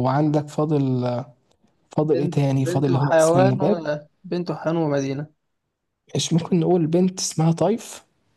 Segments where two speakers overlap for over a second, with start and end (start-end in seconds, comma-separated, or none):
2.0-3.8